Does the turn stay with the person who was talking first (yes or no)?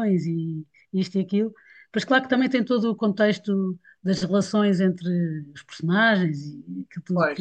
yes